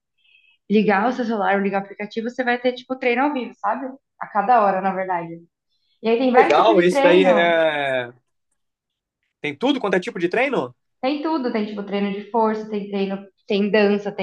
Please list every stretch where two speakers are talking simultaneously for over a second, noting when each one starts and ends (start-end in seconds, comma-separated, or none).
6.2-7.6